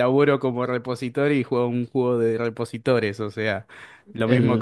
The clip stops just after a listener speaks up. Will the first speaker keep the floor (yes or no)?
yes